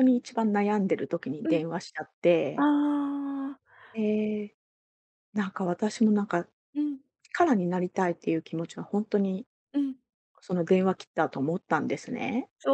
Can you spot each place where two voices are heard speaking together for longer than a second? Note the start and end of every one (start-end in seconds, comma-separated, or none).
none